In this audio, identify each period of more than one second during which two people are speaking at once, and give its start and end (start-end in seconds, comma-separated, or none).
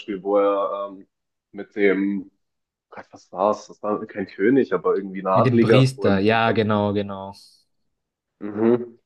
5.3-6.6